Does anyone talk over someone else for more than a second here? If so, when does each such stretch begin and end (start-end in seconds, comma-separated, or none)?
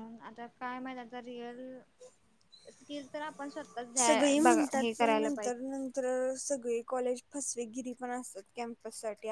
4.0-5.7